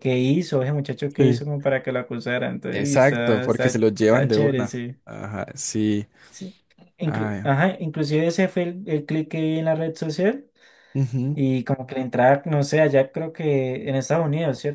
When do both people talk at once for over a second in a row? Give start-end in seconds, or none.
2.7-5.0